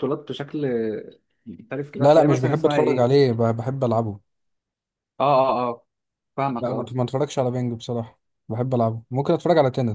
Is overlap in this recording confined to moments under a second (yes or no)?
no